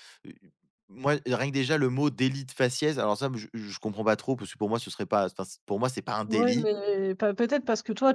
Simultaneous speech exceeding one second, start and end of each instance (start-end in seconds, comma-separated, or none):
none